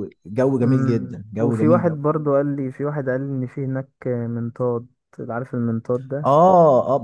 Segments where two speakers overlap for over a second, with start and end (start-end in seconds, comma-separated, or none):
0.6-2.0